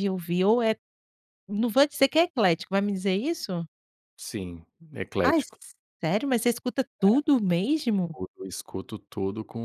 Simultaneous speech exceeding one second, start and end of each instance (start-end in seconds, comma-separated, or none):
none